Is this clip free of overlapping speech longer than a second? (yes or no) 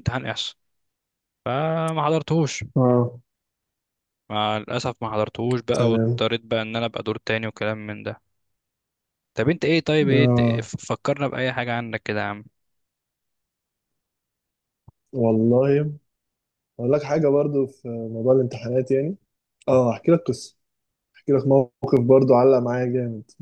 yes